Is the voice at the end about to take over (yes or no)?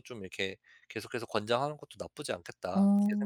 yes